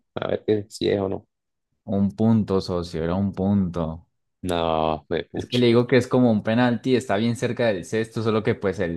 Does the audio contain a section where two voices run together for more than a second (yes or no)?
no